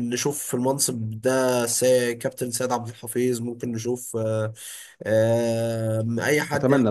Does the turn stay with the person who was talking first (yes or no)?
no